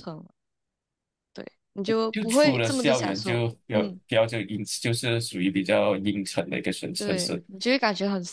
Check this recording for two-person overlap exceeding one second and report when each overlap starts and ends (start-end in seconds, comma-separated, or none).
2.1-4.0